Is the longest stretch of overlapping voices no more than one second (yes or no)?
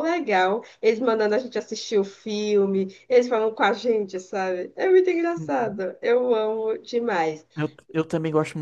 yes